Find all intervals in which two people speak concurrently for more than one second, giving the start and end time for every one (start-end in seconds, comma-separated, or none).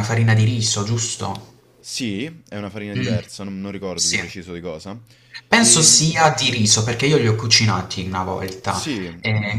none